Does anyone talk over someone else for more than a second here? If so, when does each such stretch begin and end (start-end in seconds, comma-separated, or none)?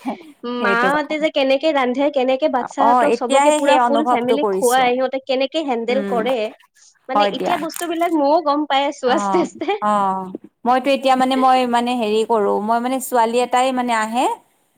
2.9-4.8